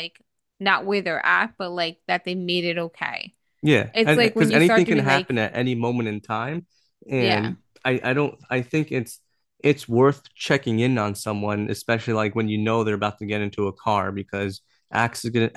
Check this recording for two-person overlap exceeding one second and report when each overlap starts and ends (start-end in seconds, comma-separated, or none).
3.9-5.3